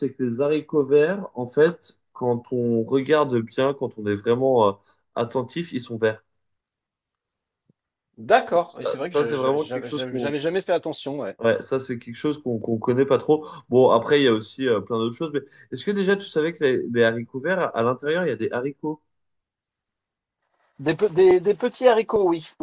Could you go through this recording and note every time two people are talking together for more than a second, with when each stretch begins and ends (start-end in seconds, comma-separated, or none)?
8.7-10.3